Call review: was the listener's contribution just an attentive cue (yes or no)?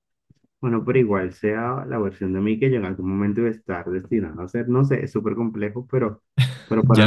no